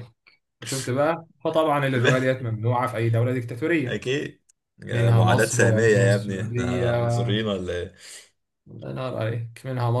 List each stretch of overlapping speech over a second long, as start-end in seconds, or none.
4.9-7.1